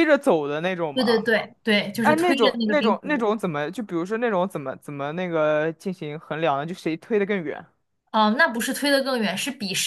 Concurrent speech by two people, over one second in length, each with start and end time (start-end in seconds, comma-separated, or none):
2.0-3.3